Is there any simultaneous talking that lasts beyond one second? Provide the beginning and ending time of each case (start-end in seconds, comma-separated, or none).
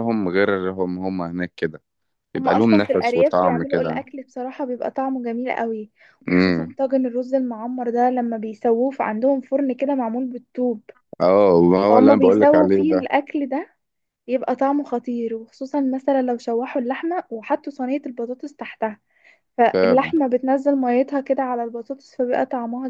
2.4-4.0, 11.9-13.1